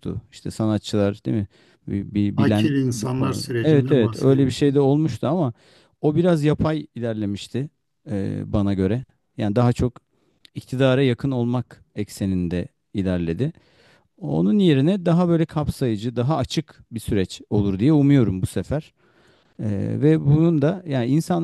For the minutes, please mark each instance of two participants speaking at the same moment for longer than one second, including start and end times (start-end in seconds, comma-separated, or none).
2.4-4.8